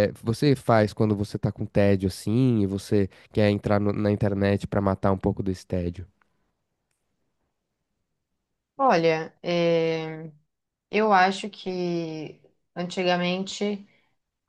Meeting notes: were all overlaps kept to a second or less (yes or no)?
yes